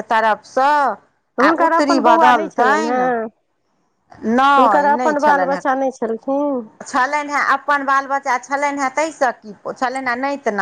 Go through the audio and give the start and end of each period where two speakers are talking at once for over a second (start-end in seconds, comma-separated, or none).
1.4-3.0